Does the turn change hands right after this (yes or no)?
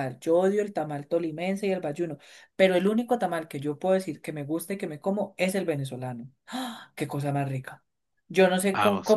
no